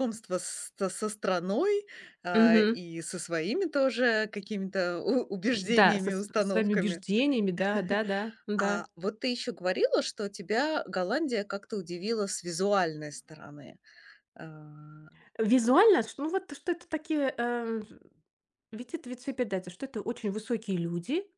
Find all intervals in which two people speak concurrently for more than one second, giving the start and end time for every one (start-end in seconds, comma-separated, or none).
5.7-7.0